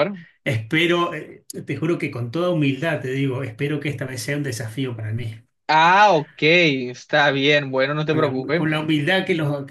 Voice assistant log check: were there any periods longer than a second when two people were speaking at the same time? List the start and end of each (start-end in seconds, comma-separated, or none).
none